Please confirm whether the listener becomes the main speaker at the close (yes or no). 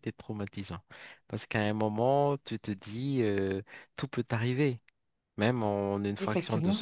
no